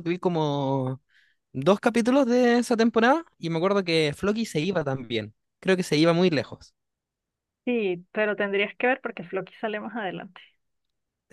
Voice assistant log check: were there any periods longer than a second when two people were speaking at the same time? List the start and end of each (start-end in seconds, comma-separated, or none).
none